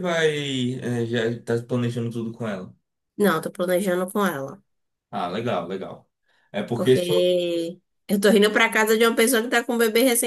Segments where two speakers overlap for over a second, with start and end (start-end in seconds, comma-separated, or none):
none